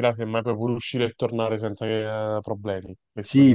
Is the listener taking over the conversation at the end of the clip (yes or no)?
yes